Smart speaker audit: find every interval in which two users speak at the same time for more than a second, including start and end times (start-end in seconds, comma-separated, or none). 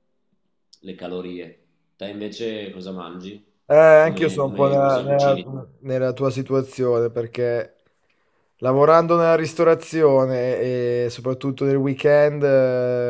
4.0-5.4